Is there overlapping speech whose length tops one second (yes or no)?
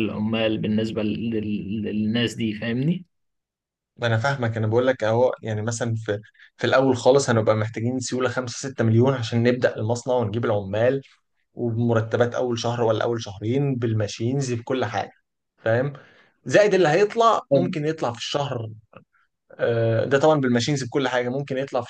no